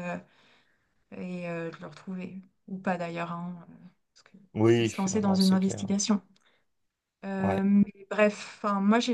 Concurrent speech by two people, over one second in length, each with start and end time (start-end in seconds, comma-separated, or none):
4.5-5.8